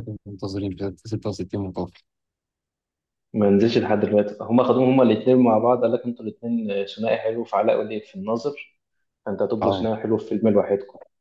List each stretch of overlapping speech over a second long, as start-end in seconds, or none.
none